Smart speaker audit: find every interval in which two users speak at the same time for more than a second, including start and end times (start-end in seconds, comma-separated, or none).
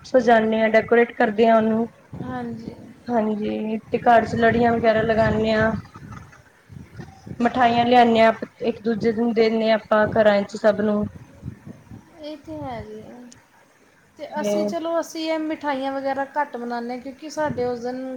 none